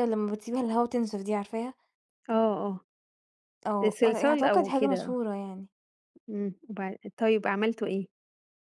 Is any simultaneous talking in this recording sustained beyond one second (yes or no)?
yes